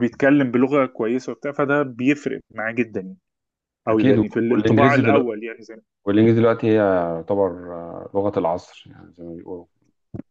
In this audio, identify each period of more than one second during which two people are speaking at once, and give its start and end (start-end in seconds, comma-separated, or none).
3.9-5.3